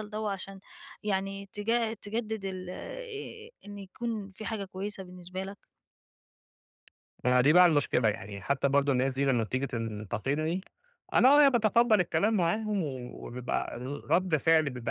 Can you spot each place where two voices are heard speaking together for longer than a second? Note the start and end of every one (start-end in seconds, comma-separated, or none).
none